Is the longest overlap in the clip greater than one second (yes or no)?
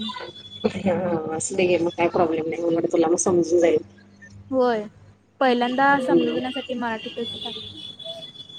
no